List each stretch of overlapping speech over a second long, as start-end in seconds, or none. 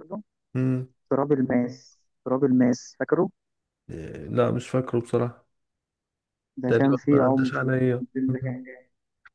6.7-8.6